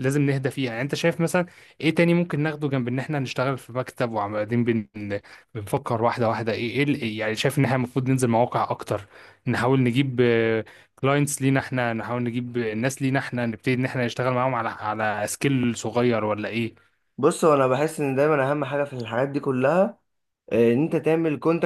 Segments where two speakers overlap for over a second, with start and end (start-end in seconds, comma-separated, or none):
none